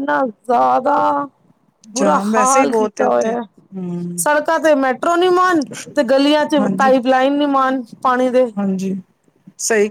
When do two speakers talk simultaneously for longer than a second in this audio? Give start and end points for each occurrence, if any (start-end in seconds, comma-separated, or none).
2.0-3.4